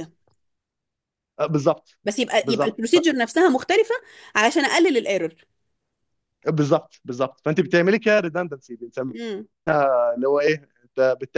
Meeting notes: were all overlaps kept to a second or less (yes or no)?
yes